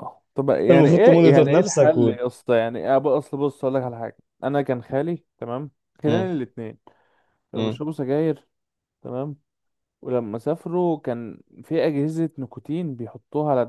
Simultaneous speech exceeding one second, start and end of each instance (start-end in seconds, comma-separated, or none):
0.6-2.1